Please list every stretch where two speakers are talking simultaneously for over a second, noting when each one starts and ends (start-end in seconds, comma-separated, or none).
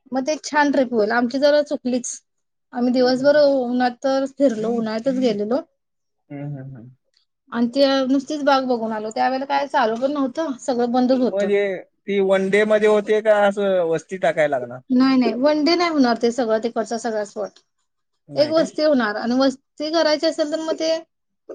none